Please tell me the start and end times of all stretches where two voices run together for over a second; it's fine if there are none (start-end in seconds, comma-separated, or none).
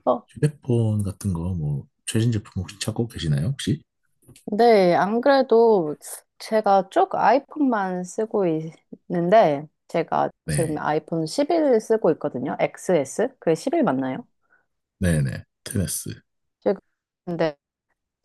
none